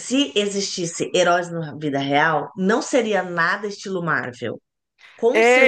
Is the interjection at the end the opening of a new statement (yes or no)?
yes